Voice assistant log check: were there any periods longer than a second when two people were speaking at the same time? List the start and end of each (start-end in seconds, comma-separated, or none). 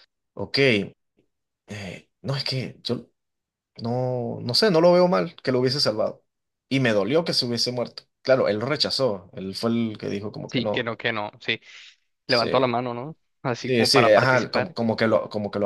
13.5-14.8